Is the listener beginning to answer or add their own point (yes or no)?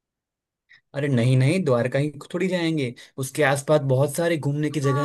yes